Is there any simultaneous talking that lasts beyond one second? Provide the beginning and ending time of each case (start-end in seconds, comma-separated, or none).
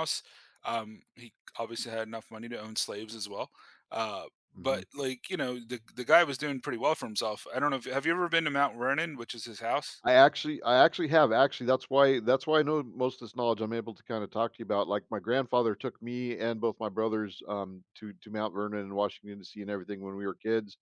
none